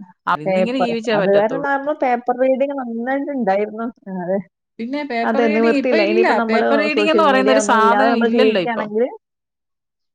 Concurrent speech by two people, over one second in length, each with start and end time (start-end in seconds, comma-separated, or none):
5.3-8.9